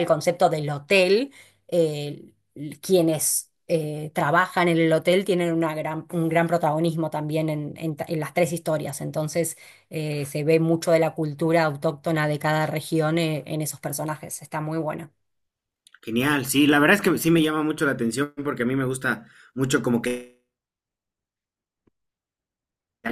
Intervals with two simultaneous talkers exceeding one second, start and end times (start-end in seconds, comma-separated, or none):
none